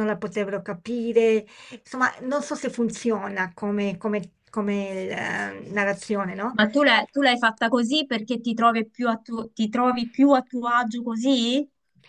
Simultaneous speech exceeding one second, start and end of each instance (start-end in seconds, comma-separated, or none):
none